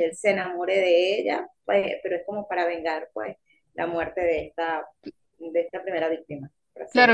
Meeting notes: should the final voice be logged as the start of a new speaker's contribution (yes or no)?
yes